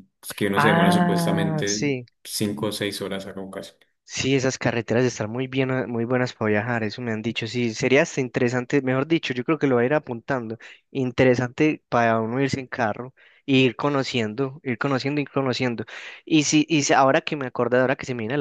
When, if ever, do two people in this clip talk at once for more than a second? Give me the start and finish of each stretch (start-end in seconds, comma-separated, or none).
0.6-1.8